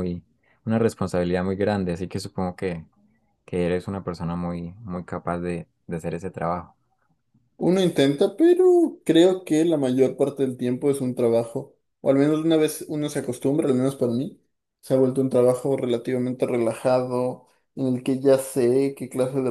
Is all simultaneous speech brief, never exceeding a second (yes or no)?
yes